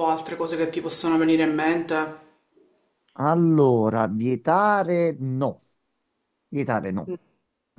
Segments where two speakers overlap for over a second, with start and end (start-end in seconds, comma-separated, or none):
none